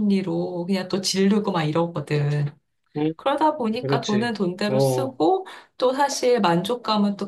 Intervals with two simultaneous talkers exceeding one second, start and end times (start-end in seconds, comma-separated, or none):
3.8-5.2